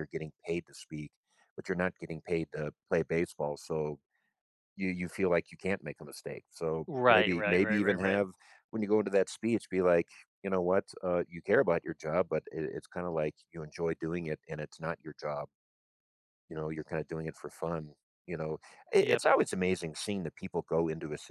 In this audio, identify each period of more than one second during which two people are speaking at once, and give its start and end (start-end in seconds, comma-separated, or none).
6.9-8.2